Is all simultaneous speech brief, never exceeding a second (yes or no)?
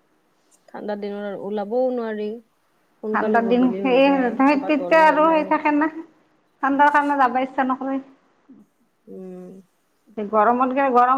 no